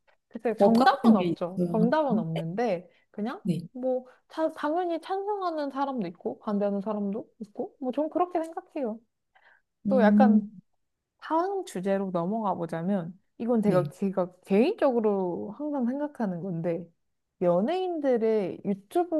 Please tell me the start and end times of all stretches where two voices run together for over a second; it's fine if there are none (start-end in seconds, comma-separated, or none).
0.6-1.9